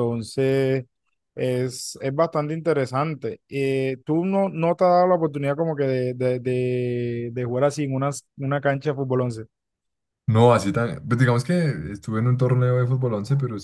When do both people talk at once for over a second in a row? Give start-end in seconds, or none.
none